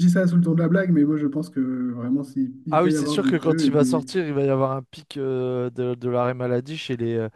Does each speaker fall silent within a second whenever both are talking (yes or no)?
no